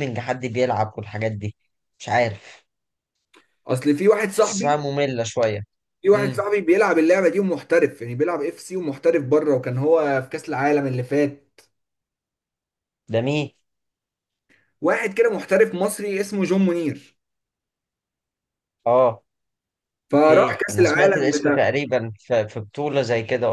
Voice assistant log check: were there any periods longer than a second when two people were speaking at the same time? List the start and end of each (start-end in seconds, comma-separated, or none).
20.2-21.7